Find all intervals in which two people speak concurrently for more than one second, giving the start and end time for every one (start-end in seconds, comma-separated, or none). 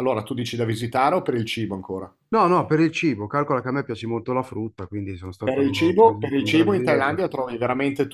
5.4-7.2